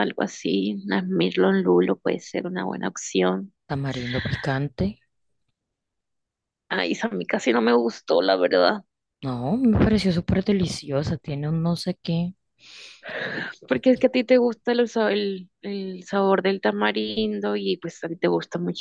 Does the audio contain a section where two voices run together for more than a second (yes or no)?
no